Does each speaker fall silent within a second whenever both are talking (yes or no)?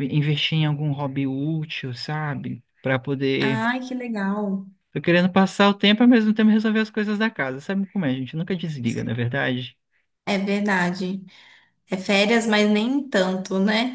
yes